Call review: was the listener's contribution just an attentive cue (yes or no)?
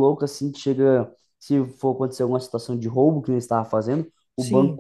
yes